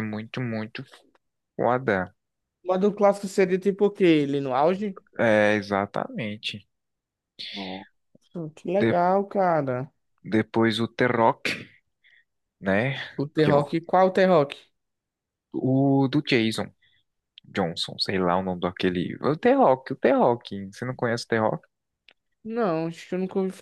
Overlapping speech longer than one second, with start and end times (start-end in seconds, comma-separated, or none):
none